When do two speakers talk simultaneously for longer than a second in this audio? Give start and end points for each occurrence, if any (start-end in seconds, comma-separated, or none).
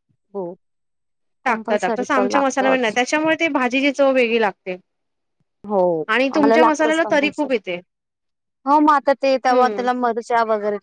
1.5-3.0, 6.3-7.6